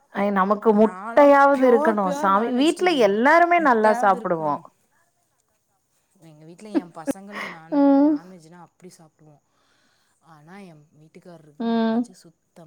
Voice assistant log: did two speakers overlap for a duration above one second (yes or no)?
yes